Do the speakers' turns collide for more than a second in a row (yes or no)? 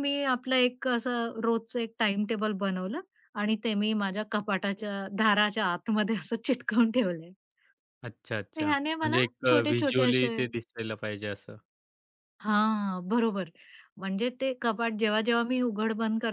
yes